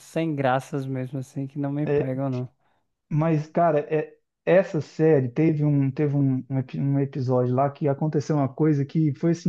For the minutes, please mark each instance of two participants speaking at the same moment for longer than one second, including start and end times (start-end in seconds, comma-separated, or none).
none